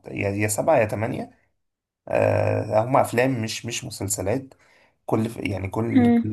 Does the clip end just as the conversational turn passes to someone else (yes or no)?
no